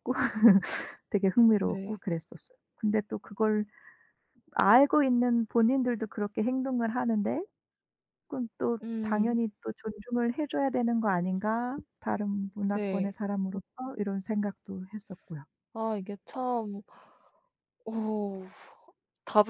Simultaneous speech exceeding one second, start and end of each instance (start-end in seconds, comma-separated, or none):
none